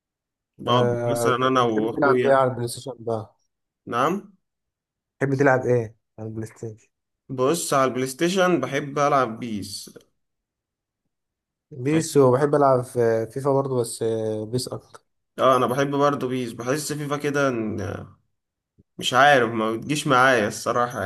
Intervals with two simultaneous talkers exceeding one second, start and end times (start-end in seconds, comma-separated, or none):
0.7-2.4